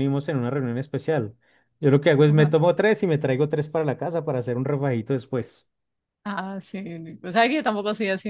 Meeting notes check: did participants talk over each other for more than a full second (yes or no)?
no